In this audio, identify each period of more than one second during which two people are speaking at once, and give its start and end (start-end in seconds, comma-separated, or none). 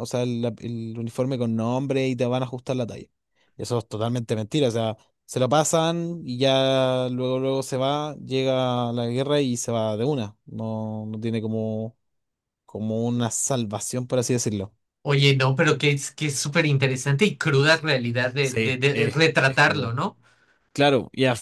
18.4-19.9